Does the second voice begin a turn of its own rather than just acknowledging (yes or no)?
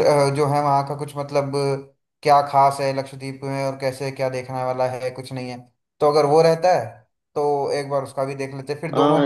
yes